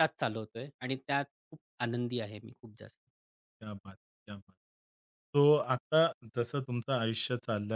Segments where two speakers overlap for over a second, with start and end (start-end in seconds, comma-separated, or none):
none